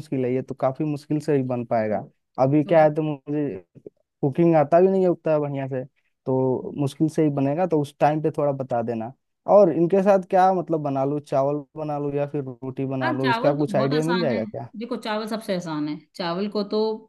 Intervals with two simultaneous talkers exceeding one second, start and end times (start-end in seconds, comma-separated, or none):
13.0-14.7